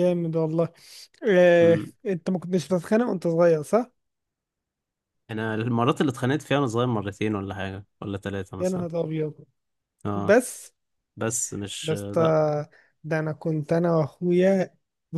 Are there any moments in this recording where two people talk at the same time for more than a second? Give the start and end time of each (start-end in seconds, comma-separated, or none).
none